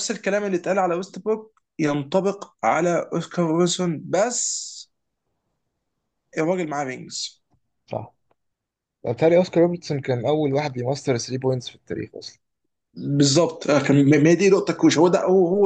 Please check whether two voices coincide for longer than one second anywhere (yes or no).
no